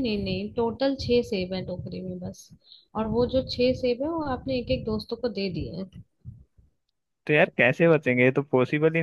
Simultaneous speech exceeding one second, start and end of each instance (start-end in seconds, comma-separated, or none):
none